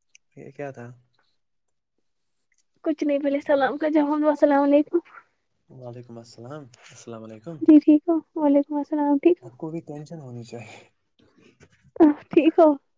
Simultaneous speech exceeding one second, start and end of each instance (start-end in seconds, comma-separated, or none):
none